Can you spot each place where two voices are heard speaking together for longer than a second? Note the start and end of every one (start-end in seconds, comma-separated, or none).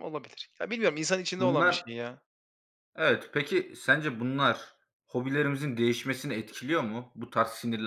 none